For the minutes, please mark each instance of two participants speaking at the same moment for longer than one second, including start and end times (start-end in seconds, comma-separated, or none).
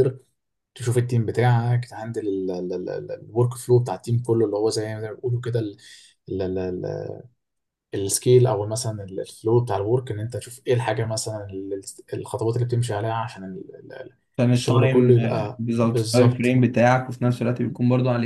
14.6-16.6